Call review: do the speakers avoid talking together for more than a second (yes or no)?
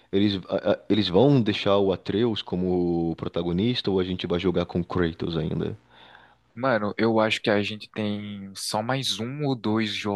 yes